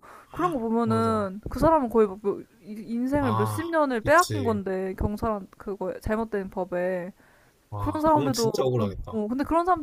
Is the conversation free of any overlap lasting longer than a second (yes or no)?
no